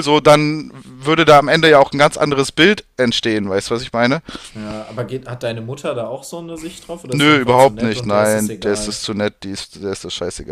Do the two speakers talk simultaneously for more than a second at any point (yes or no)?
yes